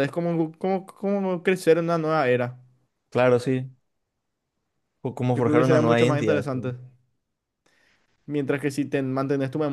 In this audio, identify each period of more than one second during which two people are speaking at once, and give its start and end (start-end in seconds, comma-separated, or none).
5.3-6.7